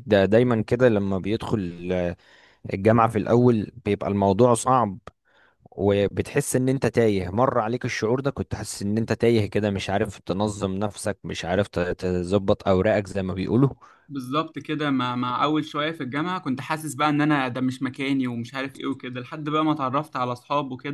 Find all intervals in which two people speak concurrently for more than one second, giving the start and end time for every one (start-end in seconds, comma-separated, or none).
none